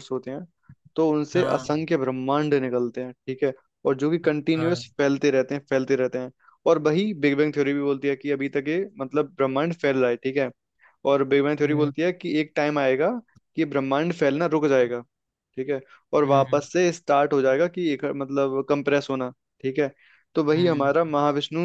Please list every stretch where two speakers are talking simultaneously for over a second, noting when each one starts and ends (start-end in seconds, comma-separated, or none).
none